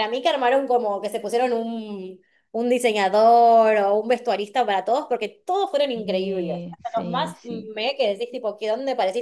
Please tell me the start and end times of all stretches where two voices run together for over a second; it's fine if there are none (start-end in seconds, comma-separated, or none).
5.9-7.7